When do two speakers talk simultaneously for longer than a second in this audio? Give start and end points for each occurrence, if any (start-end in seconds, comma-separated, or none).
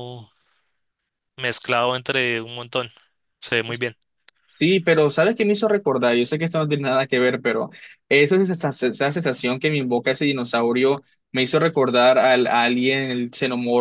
none